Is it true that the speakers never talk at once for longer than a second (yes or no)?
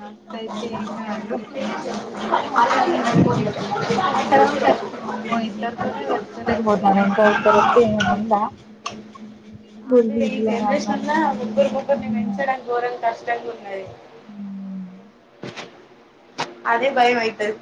no